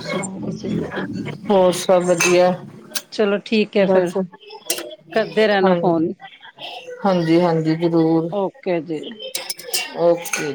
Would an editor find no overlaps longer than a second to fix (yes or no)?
yes